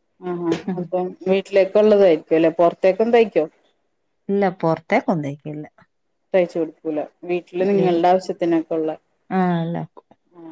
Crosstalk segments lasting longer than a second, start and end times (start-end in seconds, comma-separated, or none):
none